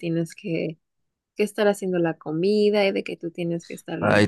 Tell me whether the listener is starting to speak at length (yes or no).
yes